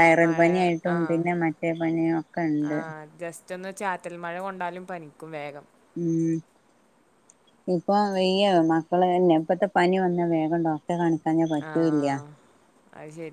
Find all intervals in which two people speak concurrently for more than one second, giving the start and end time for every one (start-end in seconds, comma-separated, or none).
none